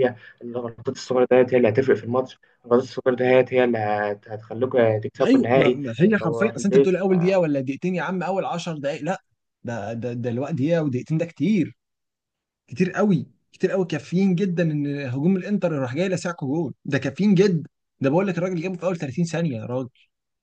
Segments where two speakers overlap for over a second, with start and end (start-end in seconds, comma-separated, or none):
5.2-6.9